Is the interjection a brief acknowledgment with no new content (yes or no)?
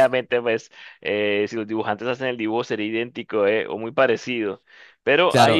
no